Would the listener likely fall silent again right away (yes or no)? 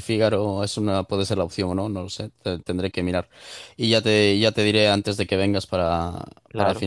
no